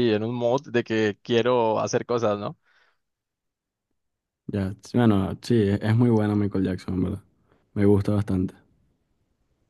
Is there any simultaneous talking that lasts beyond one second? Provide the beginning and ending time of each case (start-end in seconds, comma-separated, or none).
none